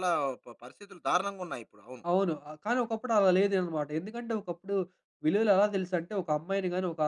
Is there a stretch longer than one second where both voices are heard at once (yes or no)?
no